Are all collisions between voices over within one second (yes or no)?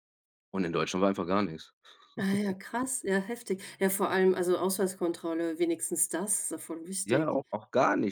yes